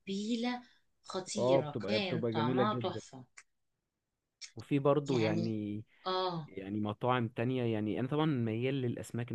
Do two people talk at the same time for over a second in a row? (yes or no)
yes